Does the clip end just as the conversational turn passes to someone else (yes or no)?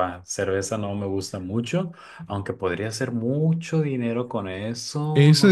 yes